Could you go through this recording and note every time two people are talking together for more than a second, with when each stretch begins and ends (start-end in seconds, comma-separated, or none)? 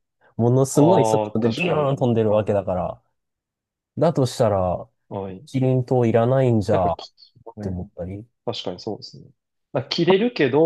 0.7-2.6